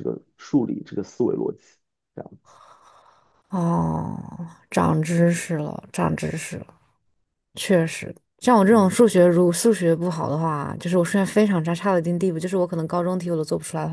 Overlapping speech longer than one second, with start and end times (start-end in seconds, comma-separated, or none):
none